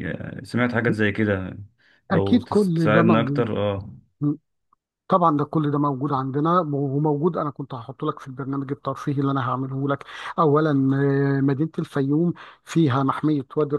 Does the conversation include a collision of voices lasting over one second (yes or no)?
yes